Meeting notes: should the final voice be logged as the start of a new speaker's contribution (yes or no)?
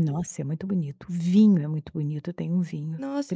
yes